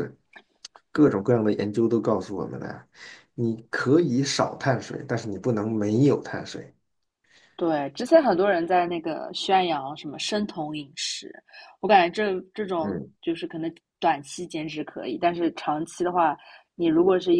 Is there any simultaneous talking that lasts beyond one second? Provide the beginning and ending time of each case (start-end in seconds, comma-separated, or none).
none